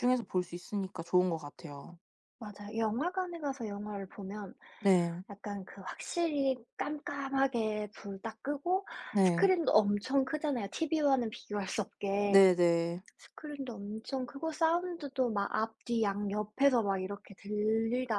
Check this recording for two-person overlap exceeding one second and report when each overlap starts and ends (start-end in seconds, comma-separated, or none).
none